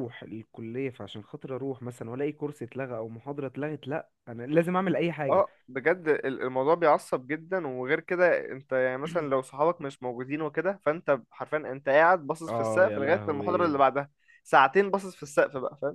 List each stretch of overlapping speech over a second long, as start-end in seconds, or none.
12.5-13.8